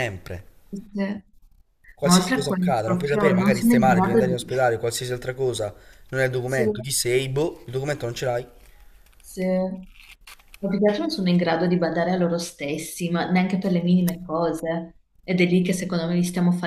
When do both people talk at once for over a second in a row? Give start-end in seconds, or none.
2.0-4.4